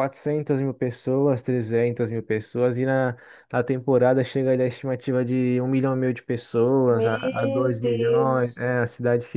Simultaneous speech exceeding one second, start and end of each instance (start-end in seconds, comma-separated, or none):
6.9-8.8